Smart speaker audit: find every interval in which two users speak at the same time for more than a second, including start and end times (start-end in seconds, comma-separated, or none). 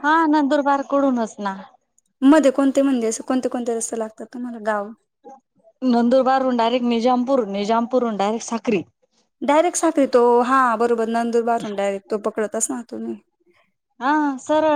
none